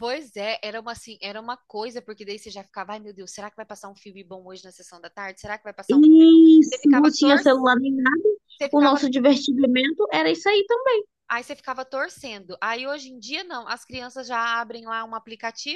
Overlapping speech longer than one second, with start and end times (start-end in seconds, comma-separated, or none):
5.9-7.7